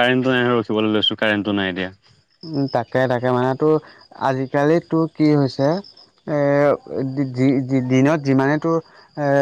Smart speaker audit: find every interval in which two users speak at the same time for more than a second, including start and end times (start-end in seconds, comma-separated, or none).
none